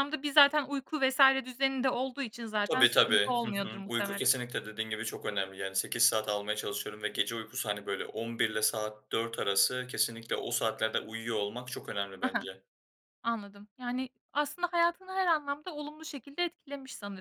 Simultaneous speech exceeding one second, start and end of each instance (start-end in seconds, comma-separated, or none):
2.7-4.3